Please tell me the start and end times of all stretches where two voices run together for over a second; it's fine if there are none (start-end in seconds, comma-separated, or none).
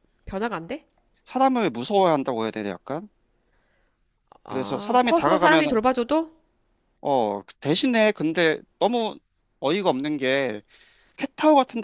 4.5-5.8